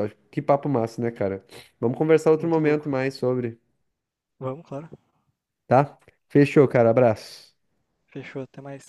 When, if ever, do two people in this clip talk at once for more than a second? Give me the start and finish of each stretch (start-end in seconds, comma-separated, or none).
none